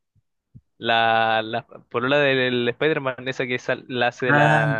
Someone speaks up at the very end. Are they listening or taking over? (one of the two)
taking over